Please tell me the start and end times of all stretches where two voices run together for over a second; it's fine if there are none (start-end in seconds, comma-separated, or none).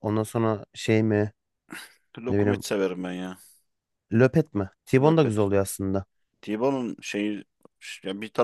none